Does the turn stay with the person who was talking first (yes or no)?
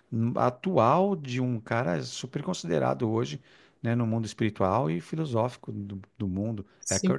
no